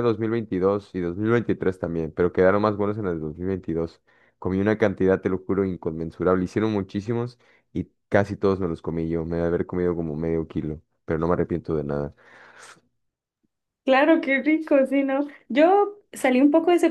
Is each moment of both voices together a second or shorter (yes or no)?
yes